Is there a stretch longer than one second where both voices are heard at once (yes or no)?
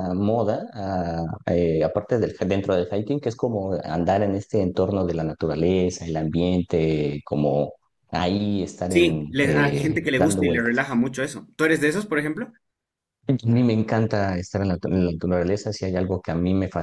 yes